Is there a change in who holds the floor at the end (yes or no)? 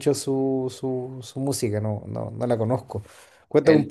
no